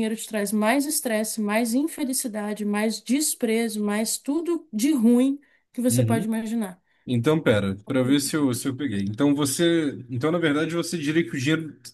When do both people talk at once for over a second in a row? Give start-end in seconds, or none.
none